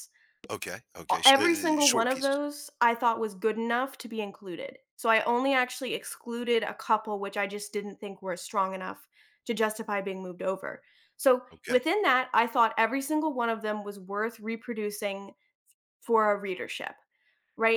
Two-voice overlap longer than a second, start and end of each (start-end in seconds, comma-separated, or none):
1.1-2.4